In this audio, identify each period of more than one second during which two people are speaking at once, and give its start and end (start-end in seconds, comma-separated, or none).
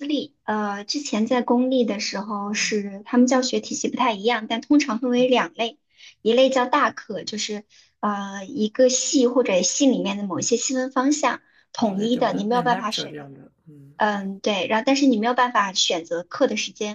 11.8-13.2